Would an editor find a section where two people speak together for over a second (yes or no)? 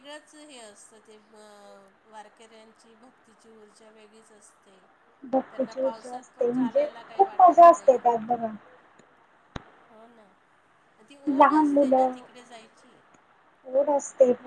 yes